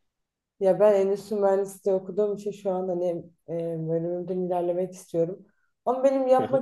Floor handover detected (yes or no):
no